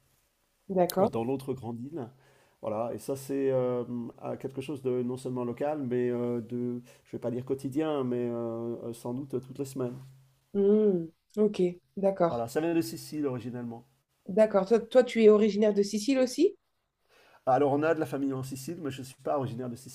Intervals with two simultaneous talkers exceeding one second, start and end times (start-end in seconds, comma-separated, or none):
none